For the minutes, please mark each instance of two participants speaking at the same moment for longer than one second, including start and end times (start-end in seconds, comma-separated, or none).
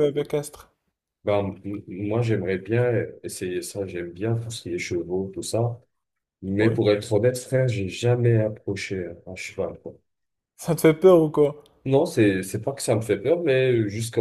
none